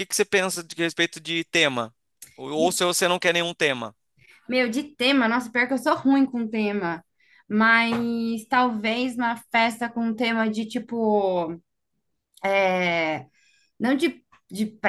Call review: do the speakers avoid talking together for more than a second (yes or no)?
yes